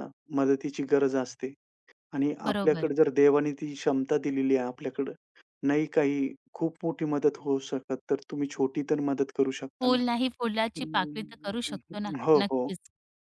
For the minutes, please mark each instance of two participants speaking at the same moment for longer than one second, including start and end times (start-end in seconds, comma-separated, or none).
10.8-12.7